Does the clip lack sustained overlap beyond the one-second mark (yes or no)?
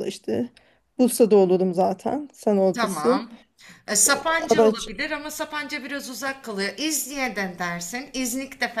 yes